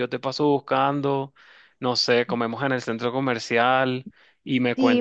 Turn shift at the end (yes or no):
yes